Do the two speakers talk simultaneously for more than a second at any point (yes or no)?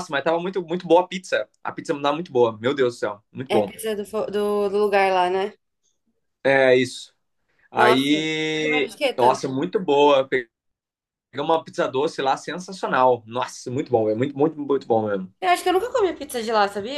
yes